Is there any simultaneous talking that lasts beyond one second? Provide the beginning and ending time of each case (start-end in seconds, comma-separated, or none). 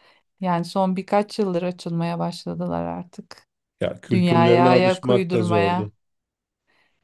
4.1-5.9